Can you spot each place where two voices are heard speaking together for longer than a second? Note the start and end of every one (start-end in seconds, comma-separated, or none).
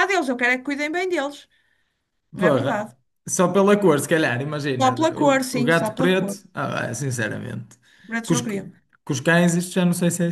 4.8-6.4